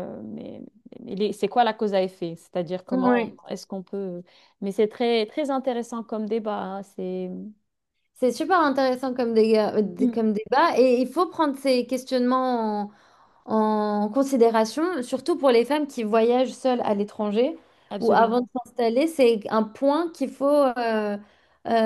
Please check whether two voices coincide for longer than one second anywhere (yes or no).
no